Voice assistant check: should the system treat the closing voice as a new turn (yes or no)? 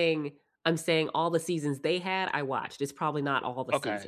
yes